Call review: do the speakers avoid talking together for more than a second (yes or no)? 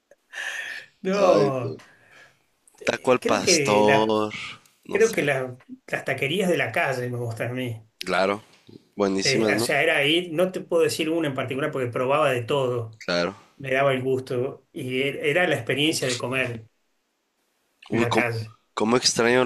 no